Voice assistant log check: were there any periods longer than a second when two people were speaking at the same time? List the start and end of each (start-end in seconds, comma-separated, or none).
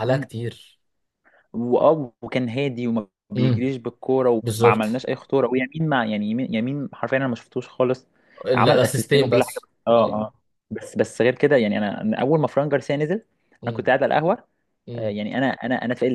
8.6-10.2